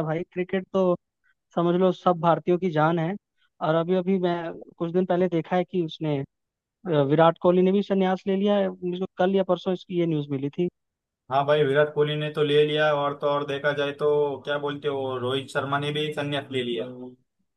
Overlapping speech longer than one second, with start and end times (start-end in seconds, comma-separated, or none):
none